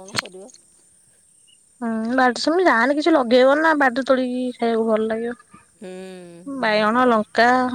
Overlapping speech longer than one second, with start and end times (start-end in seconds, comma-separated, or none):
5.8-7.1